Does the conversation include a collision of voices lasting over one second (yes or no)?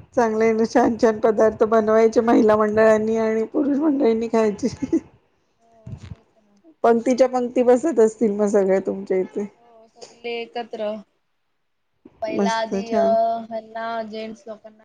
no